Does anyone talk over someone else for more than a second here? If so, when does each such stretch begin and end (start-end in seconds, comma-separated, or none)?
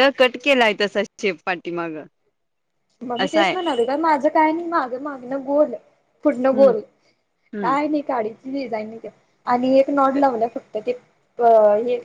none